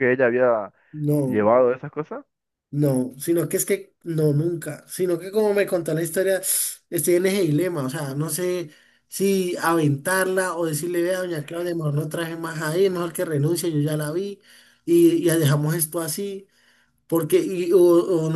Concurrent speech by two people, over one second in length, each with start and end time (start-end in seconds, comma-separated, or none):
none